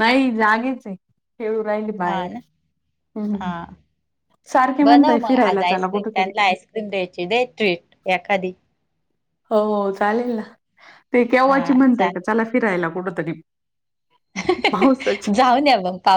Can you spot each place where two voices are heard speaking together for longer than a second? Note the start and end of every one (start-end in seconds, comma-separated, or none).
4.8-6.3